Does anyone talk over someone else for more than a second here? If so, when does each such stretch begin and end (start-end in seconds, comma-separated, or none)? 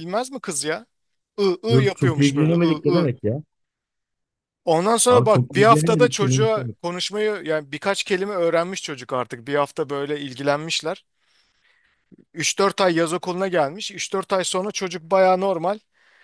1.7-3.1, 5.1-6.7